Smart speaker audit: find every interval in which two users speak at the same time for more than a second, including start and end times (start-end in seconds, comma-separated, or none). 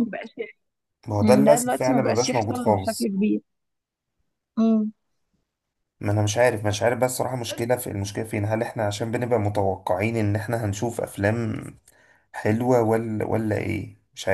1.2-3.1